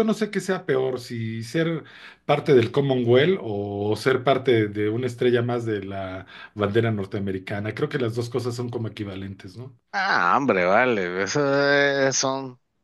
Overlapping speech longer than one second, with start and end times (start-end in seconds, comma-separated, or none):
none